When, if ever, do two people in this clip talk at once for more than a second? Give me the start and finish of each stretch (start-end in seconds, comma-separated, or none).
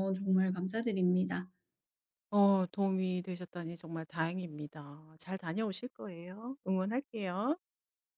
none